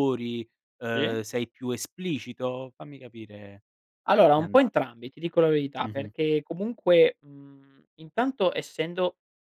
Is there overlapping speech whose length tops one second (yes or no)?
no